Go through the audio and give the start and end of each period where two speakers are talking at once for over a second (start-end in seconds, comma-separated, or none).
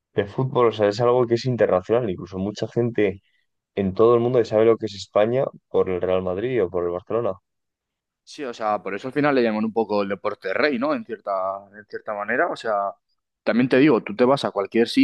none